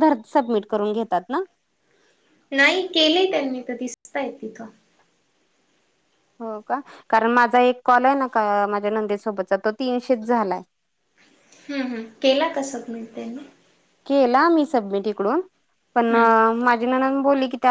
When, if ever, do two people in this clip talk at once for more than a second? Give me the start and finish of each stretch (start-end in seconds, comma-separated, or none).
none